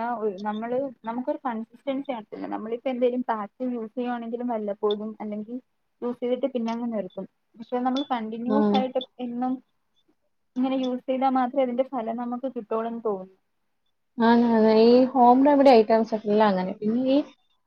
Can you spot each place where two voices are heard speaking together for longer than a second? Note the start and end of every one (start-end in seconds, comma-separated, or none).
none